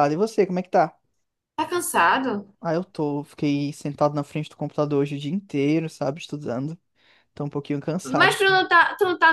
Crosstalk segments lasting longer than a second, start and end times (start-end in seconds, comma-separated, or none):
none